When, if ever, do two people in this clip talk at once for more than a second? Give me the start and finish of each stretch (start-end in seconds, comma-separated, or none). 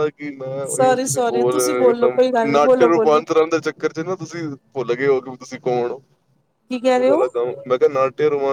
0.8-3.2